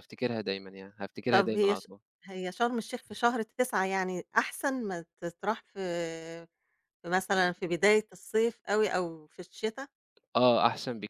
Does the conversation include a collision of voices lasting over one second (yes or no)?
no